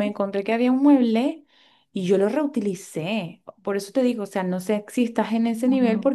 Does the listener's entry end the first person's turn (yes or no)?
no